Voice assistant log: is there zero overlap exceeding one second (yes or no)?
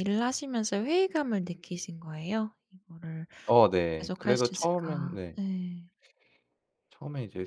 no